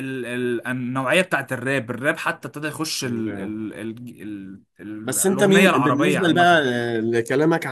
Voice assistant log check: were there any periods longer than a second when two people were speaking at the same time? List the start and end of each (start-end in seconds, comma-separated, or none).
5.0-6.6